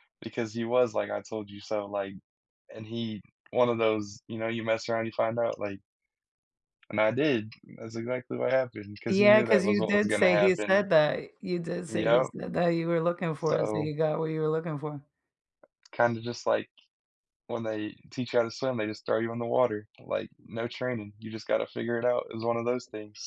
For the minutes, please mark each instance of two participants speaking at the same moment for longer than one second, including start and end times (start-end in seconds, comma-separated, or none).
9.1-10.9